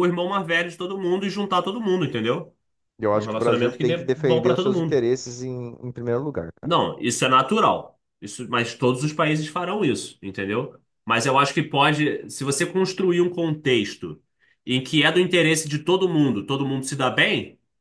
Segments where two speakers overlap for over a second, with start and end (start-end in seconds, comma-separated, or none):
3.1-5.0